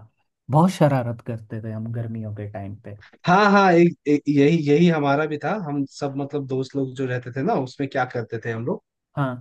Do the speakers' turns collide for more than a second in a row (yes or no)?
no